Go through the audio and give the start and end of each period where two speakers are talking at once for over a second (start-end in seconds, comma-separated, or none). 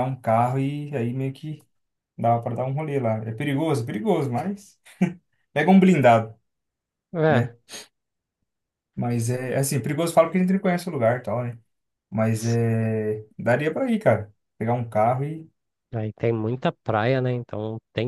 none